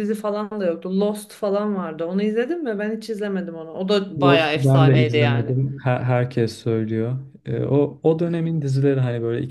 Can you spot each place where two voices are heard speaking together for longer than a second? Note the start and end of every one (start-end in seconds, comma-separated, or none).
4.2-5.6